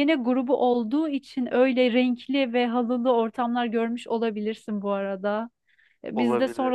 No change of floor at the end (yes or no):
yes